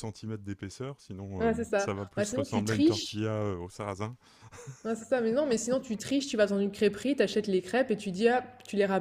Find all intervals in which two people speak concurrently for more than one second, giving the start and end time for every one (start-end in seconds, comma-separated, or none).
1.4-3.2